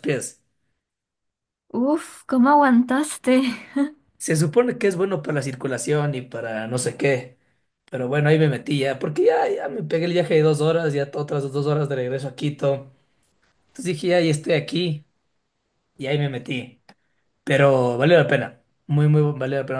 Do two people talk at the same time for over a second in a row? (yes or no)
no